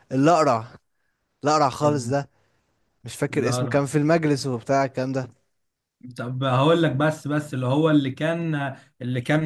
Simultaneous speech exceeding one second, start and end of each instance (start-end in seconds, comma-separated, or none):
none